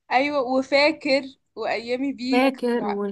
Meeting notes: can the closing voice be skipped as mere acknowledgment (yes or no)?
no